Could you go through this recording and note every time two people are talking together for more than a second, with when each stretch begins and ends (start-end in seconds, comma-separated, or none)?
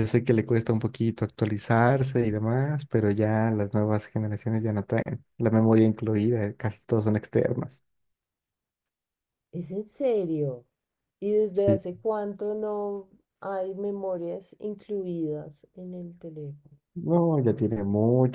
none